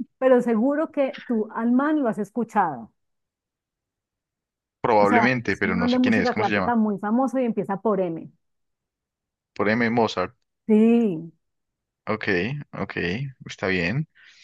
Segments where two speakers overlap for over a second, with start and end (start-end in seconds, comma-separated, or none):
5.0-6.8